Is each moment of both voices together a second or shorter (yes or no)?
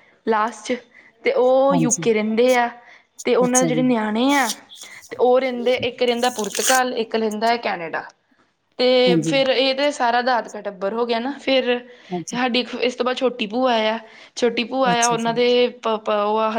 yes